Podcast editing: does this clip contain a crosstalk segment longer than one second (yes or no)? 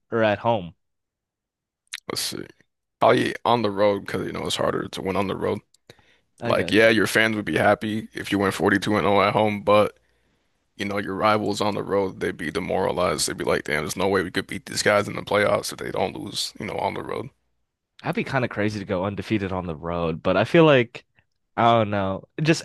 no